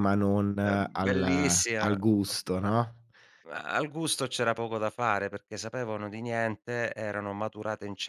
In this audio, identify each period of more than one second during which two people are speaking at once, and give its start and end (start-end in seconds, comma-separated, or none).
0.6-2.0